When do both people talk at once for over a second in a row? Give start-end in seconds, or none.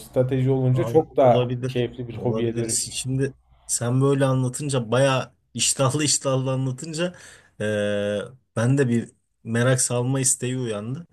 0.7-2.9